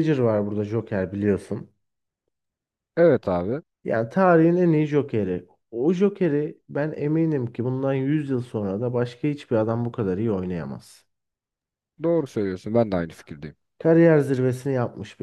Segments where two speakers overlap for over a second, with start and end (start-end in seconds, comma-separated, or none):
none